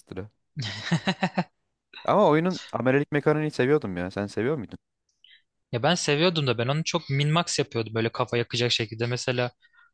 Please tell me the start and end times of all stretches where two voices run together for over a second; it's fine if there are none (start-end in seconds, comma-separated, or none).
none